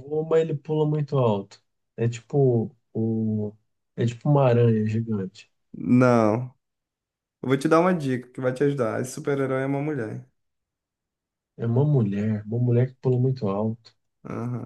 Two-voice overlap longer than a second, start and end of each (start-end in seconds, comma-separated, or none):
none